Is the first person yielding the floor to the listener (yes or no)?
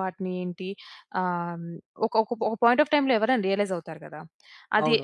yes